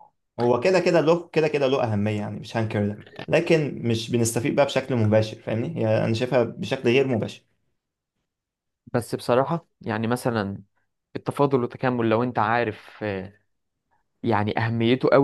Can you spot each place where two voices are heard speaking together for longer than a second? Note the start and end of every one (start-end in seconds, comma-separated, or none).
none